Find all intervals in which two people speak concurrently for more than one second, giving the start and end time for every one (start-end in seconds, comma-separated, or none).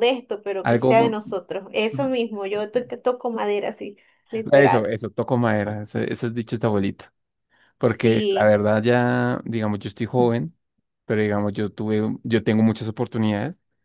none